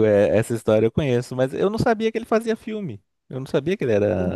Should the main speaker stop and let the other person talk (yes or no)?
yes